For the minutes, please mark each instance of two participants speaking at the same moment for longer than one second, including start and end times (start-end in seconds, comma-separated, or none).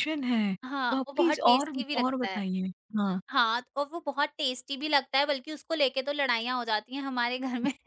0.9-2.5